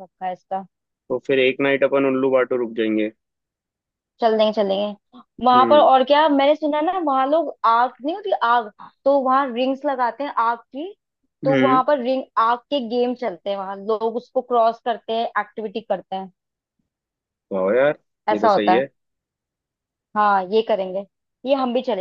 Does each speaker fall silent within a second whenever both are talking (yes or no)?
yes